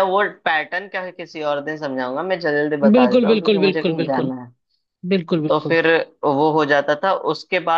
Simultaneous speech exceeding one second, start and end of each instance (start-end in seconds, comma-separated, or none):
2.9-4.3